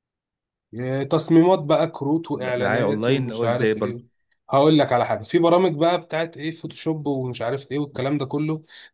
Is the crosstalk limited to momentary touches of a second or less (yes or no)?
no